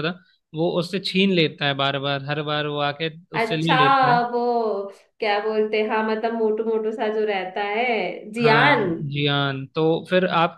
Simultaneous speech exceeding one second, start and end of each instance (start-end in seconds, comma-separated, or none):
none